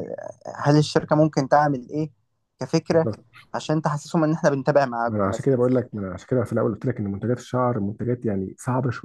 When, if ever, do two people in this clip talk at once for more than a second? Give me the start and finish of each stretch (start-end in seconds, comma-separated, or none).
none